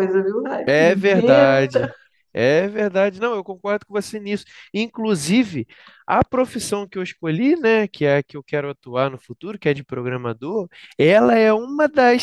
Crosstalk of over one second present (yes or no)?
yes